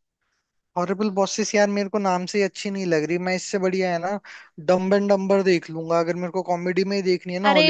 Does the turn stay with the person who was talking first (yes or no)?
no